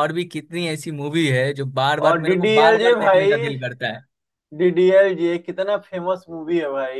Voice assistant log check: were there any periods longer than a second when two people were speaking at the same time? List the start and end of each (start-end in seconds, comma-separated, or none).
2.0-3.3